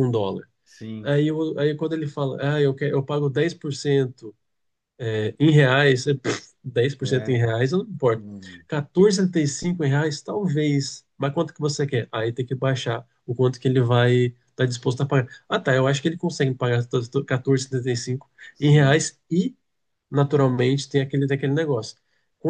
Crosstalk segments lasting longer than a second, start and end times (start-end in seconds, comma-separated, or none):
none